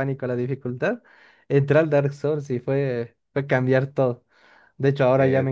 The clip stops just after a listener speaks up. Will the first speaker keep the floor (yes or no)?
yes